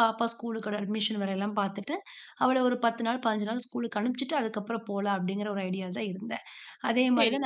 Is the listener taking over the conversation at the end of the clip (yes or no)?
yes